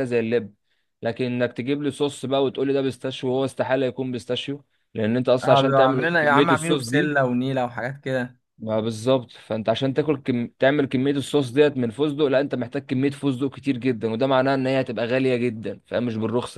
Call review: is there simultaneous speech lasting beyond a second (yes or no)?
yes